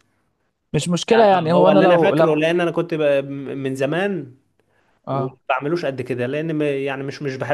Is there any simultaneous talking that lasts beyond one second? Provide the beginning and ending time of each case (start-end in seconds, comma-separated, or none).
1.1-2.4